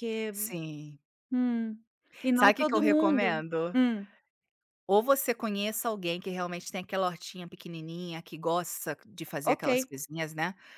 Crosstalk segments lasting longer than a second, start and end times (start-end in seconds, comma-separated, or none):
2.3-3.8